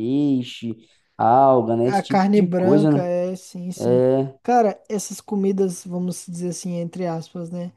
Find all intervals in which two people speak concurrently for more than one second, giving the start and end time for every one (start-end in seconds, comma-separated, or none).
1.8-3.1